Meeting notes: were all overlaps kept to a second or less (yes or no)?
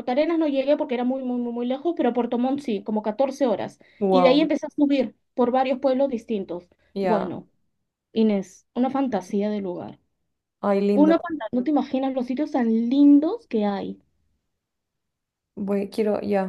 yes